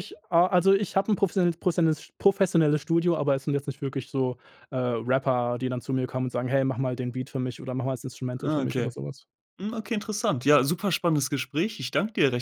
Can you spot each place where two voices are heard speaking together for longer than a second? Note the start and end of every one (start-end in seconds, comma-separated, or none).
none